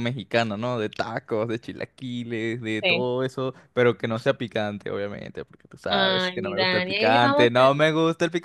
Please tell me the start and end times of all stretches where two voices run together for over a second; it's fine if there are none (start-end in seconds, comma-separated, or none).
5.9-7.6